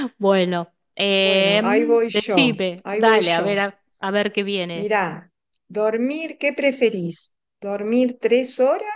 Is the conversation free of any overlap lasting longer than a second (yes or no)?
no